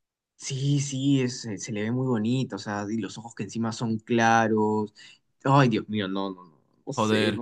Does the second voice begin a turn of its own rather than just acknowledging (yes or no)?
yes